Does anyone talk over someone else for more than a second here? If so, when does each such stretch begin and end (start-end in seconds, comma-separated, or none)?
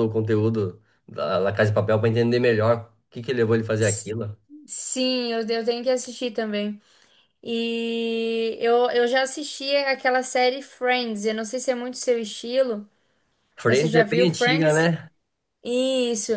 13.7-14.9